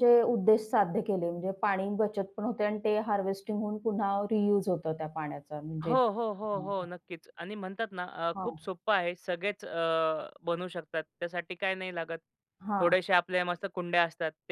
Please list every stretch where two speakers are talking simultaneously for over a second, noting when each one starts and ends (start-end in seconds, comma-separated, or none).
none